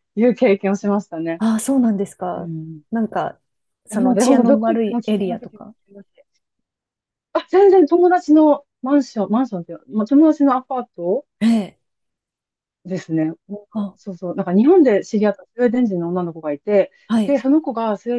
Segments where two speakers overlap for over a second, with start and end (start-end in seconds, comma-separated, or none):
3.9-5.8